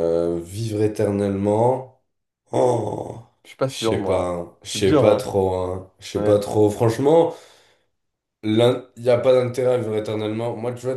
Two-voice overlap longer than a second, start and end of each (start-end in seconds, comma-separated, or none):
3.6-5.3